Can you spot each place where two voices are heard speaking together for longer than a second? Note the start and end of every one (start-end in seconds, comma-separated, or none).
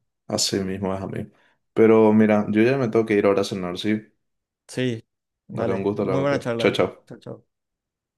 5.5-7.1